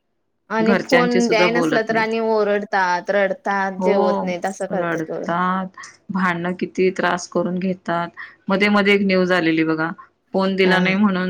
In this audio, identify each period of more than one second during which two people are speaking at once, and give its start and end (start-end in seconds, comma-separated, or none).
0.7-2.1